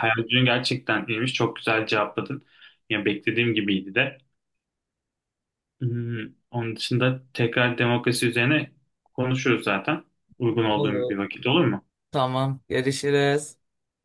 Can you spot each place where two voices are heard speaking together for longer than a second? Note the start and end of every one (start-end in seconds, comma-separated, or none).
none